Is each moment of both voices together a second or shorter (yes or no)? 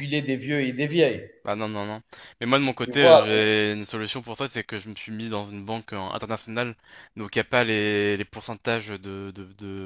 yes